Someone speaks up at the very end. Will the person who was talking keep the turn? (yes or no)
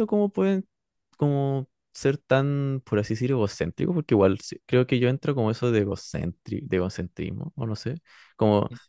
yes